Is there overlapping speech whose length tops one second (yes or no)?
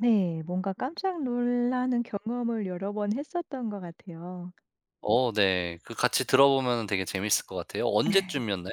no